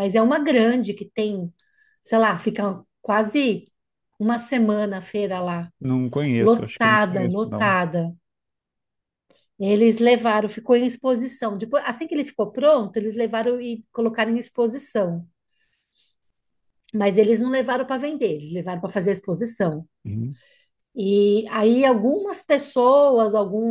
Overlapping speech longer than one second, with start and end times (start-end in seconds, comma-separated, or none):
6.4-7.8